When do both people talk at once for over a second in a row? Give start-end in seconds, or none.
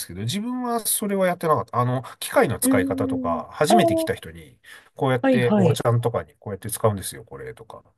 2.6-4.2